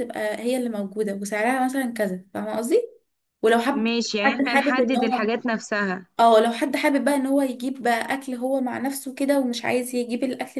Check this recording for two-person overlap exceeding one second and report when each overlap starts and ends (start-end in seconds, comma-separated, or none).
3.7-5.3